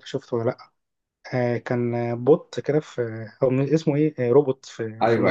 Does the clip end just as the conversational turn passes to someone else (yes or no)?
yes